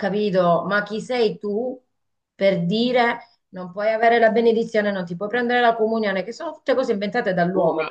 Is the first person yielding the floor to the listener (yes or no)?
no